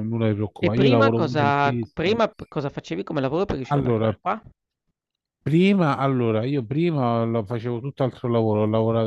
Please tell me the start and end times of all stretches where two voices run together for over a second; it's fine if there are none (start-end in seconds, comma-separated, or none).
0.6-2.2